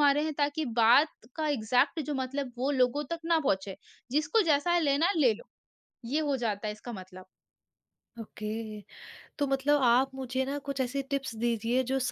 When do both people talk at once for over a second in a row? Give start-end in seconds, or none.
none